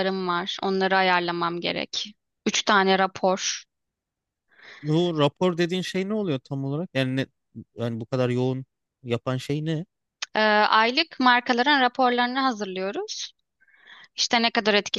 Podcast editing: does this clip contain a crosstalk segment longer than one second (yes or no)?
no